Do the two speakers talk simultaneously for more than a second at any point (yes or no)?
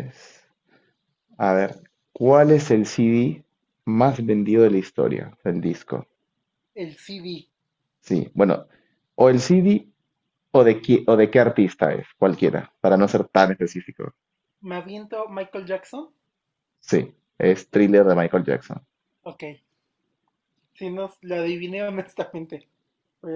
no